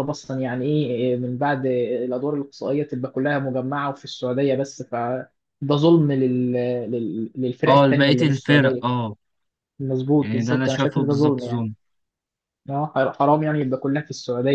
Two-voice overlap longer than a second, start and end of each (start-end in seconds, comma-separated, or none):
7.7-8.9, 10.2-11.7